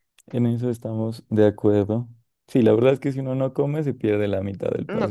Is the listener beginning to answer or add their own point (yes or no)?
yes